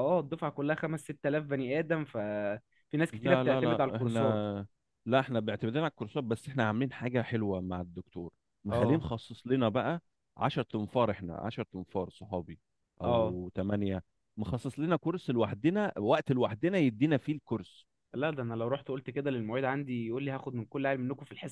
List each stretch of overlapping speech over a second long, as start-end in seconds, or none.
3.1-4.4